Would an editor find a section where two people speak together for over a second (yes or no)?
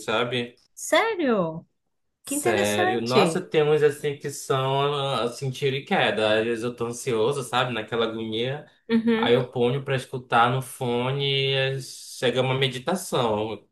yes